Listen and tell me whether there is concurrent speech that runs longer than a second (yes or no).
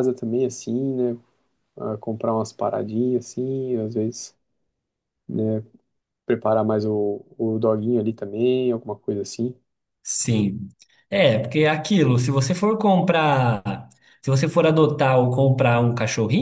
no